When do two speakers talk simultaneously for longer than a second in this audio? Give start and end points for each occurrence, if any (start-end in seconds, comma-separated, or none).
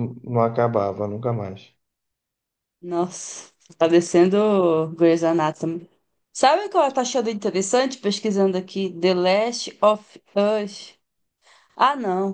none